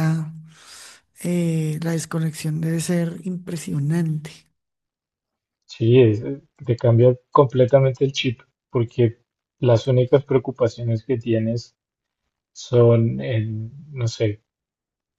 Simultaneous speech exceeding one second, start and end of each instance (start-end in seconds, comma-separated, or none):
none